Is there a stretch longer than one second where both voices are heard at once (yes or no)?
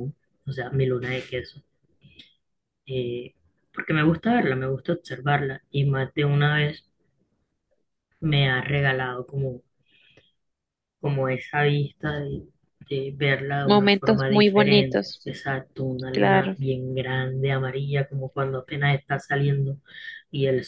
yes